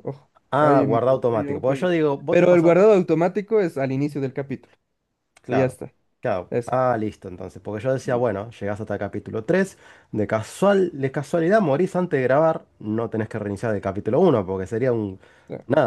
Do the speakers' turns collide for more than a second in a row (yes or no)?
yes